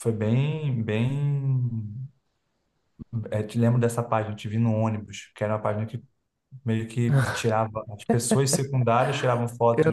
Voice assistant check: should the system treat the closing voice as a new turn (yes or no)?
no